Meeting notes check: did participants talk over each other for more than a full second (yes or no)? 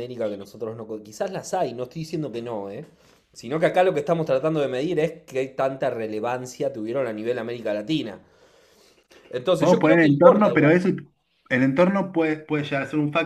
yes